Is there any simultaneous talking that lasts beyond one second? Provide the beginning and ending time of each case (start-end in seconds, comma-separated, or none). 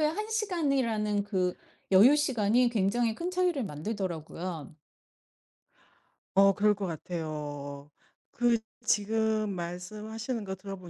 none